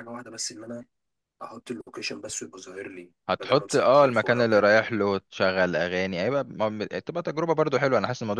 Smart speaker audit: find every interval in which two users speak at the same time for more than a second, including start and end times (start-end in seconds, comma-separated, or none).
3.3-4.7